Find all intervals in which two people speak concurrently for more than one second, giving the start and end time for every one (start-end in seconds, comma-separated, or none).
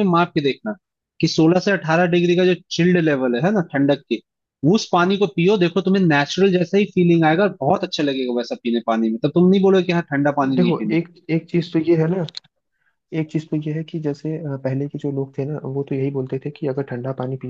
none